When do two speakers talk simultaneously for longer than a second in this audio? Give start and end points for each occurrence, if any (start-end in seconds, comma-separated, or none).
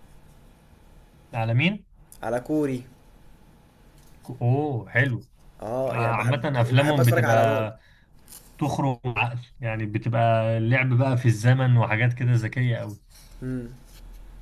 5.9-7.7